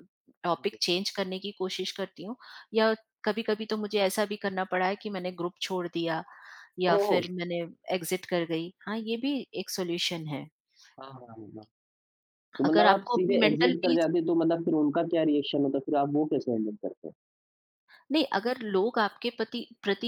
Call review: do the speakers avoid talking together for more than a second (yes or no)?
no